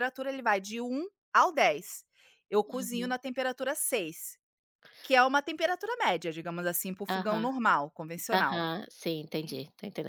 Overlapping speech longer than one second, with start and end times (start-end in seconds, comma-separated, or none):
none